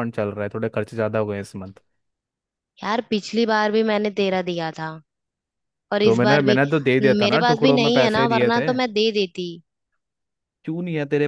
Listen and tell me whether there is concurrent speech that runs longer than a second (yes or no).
yes